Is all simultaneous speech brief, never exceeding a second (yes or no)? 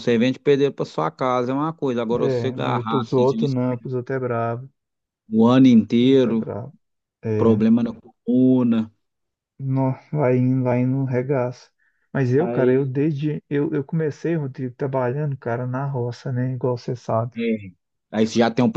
no